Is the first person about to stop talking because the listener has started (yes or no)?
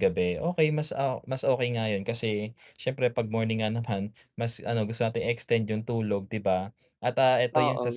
no